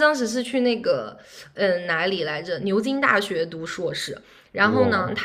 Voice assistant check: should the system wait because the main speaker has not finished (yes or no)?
yes